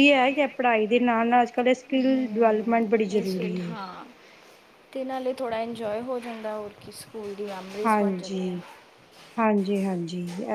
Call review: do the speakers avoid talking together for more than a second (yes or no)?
no